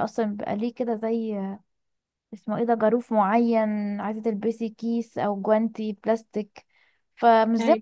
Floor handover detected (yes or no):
no